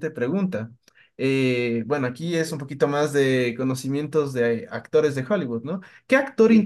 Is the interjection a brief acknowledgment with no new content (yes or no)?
yes